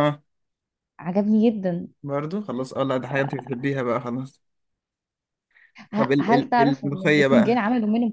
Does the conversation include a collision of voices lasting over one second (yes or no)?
yes